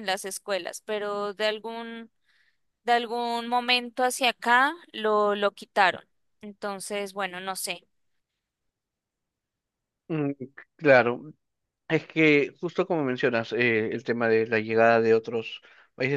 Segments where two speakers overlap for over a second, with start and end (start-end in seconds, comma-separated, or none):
none